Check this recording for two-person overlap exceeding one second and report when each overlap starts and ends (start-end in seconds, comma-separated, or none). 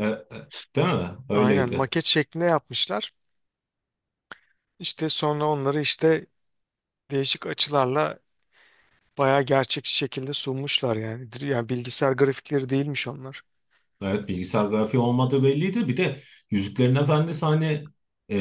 none